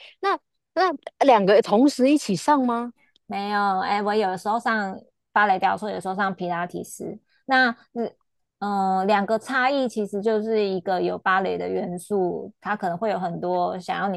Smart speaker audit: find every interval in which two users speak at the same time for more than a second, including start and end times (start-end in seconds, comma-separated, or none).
none